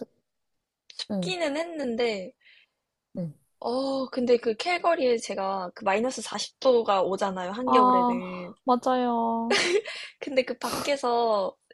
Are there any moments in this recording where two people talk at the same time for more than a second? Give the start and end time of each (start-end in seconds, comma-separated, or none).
none